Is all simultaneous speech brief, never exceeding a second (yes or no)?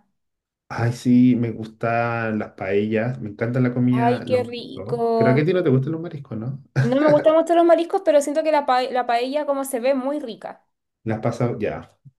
no